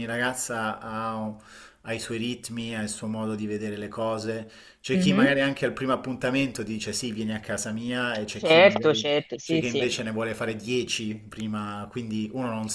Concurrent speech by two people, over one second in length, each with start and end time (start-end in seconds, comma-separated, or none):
8.3-9.8